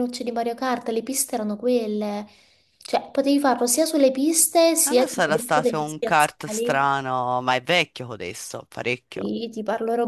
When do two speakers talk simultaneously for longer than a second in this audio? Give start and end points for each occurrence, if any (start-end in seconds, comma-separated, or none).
4.8-6.9